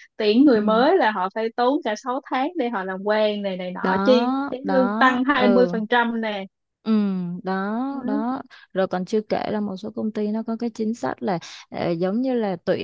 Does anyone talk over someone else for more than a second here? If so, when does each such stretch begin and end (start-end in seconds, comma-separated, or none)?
3.8-5.8